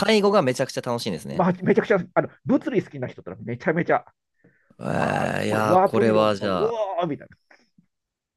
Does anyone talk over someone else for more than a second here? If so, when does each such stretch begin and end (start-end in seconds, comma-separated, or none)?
5.5-6.8